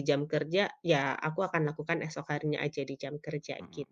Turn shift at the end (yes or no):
yes